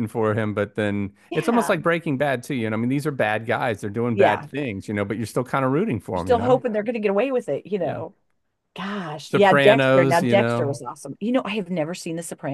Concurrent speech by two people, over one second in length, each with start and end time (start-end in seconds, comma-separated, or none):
9.2-10.8